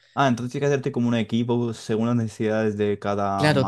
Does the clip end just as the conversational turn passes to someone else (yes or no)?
yes